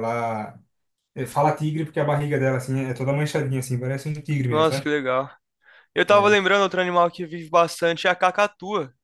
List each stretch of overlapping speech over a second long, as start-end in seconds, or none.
none